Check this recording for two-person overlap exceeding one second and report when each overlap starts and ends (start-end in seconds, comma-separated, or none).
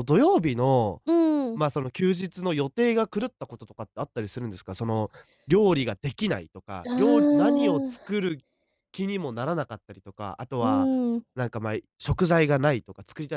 6.9-8.2